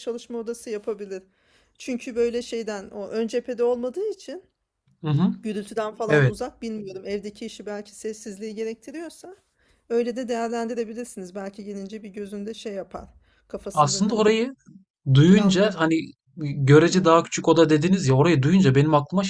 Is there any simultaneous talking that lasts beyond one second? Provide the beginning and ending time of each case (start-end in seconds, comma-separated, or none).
none